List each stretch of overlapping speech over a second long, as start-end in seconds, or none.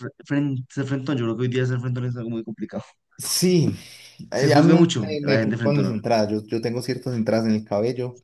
4.3-6.0